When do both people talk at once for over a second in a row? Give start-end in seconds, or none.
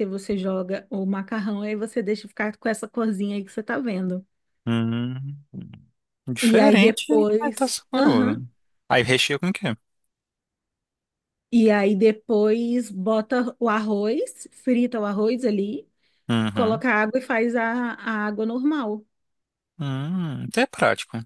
6.4-8.4